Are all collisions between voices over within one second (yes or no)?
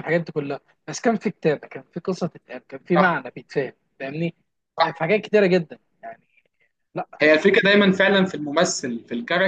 yes